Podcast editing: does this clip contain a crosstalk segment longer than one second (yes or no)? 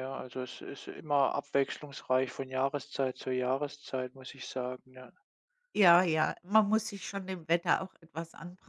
no